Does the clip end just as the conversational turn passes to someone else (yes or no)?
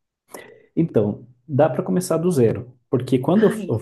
no